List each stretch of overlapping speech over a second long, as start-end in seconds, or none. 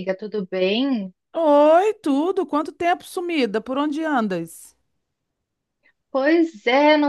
none